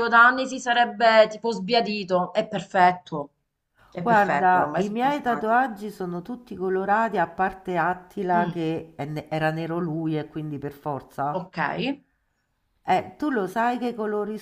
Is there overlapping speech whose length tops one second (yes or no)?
yes